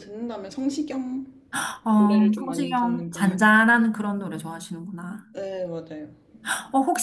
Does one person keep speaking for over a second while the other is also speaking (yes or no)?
yes